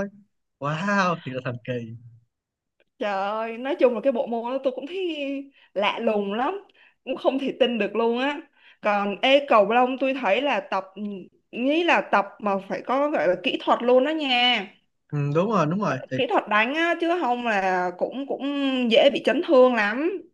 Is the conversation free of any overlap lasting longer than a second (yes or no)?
yes